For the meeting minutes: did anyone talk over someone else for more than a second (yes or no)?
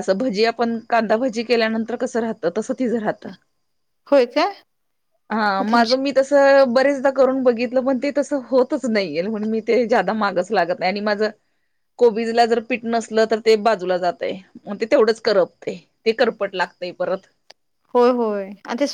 no